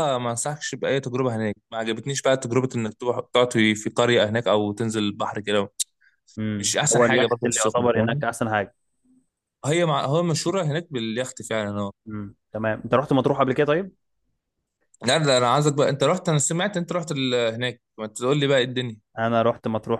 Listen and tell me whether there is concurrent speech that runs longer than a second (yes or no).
yes